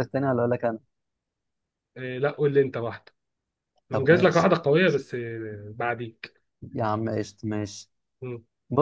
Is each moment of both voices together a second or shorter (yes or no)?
yes